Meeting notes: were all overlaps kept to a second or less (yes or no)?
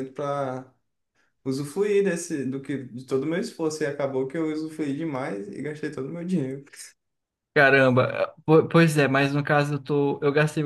yes